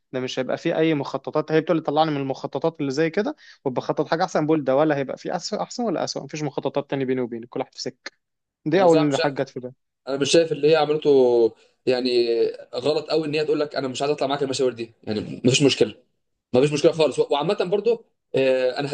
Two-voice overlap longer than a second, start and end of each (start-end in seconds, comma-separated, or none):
none